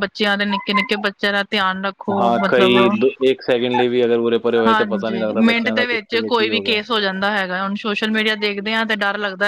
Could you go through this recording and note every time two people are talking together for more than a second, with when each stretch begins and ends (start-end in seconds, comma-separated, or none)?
4.7-6.8